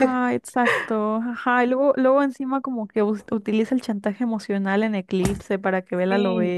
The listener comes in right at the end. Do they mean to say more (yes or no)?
yes